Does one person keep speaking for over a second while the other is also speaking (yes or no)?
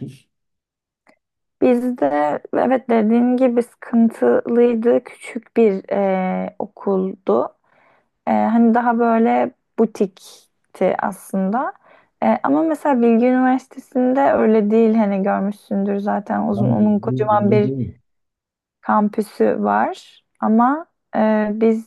yes